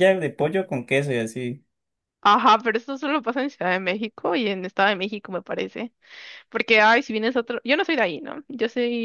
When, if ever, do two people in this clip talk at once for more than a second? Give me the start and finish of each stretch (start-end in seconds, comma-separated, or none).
none